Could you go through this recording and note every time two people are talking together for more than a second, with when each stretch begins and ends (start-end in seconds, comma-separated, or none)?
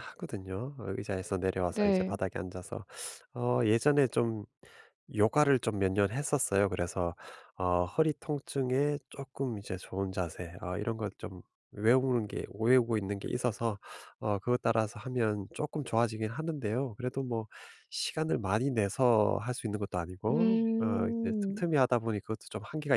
20.3-21.6